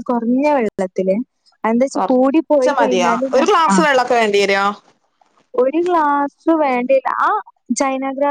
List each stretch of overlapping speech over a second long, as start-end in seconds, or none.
1.9-3.8